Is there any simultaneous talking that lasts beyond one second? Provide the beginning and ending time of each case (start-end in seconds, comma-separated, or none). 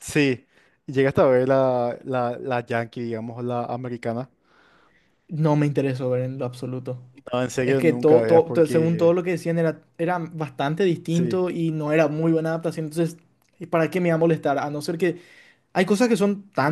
7.6-9.2